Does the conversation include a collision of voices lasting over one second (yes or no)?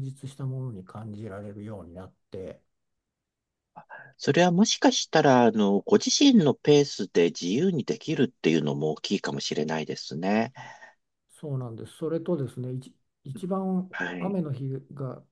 no